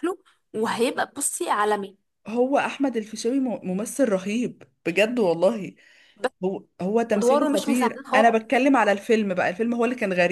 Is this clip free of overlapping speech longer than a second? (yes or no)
no